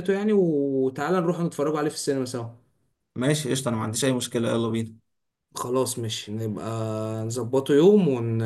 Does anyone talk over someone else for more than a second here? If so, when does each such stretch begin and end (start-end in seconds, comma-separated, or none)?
none